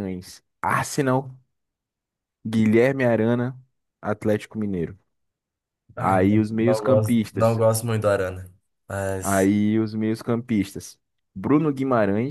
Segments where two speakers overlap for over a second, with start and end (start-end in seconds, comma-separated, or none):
6.0-7.6